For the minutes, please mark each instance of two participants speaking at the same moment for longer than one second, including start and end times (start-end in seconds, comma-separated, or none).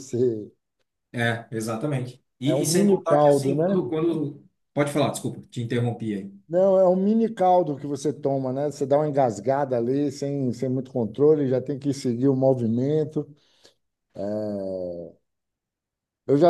2.4-3.8